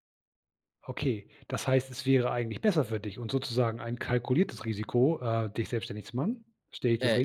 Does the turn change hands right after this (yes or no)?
yes